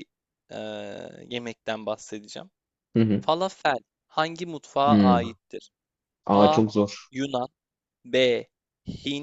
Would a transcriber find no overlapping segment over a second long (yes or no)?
yes